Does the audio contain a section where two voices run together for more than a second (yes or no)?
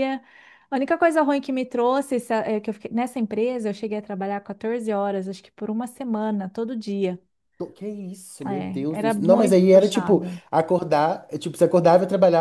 yes